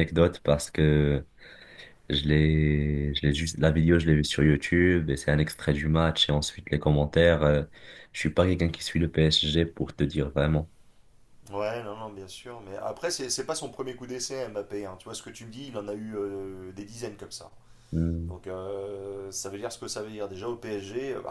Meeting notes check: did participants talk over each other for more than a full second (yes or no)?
no